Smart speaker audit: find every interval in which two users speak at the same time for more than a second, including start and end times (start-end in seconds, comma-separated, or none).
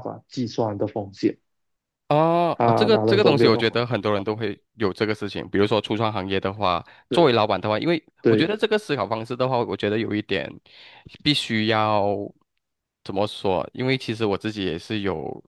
2.5-3.8